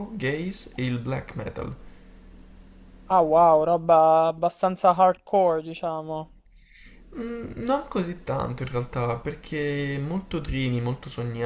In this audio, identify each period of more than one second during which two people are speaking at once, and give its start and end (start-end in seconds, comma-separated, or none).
none